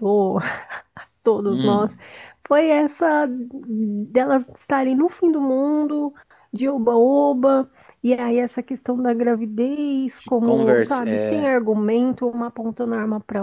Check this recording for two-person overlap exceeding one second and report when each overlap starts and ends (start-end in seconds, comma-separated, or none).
10.2-11.6